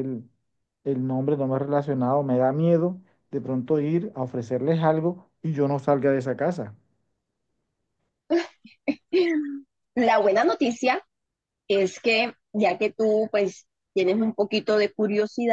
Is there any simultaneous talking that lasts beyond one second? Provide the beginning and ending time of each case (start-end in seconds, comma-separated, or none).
none